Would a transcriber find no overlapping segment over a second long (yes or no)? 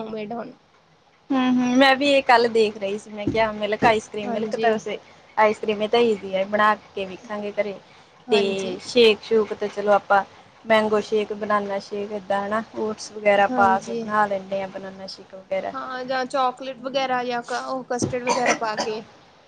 yes